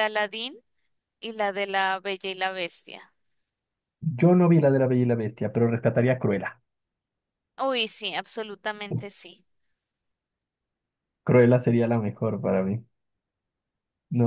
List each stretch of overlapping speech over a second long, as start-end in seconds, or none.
none